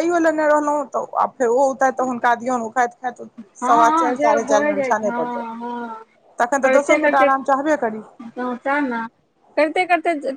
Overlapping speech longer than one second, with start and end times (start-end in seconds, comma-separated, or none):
3.6-5.5